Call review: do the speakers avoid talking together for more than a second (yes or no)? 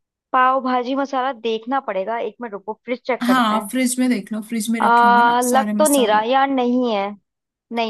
no